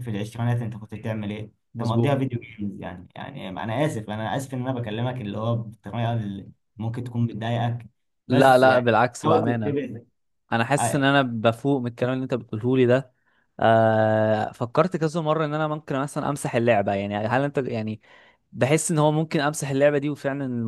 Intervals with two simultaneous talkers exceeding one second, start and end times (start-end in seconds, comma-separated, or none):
8.3-9.8